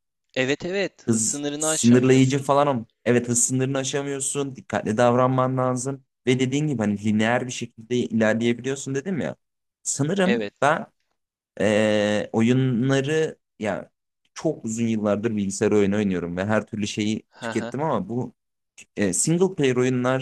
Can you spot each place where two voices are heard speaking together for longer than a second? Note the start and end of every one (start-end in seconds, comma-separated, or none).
1.1-2.4